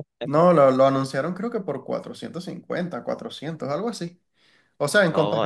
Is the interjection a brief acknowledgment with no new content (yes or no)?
yes